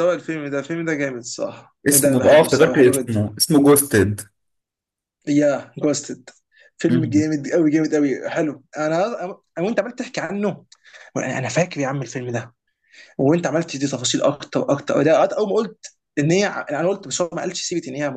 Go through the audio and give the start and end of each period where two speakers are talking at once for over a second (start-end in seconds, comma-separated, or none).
1.9-3.2